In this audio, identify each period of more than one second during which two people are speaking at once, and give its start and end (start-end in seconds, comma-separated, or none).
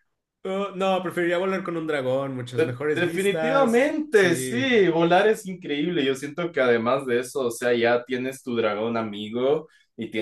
2.5-4.8